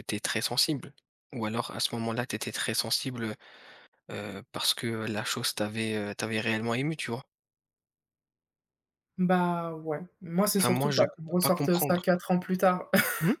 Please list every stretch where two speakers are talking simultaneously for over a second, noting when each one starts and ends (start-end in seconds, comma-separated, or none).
10.6-12.0